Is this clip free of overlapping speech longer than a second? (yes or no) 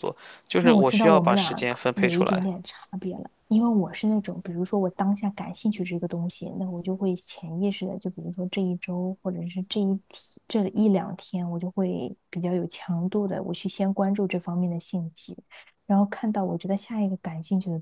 no